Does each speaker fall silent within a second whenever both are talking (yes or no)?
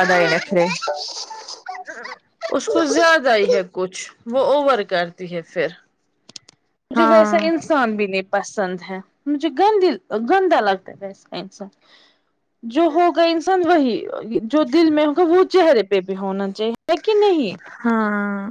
yes